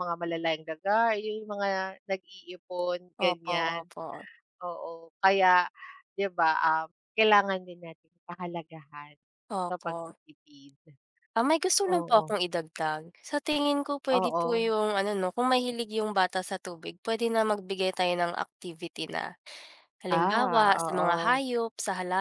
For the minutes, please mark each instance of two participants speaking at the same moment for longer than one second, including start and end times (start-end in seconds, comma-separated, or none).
20.1-21.4